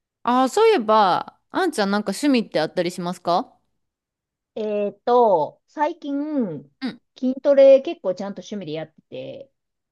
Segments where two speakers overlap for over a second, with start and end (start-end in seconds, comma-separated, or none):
none